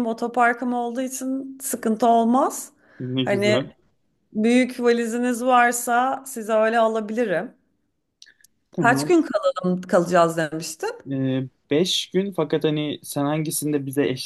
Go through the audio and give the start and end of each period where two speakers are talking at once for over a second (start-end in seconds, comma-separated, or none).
none